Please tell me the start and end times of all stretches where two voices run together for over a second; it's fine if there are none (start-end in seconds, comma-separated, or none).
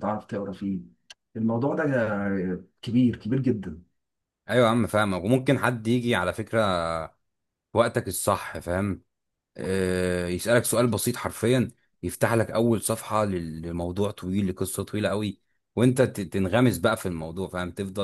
none